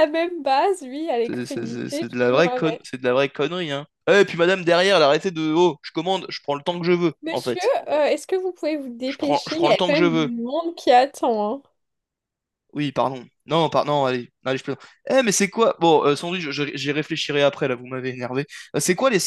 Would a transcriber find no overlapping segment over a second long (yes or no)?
no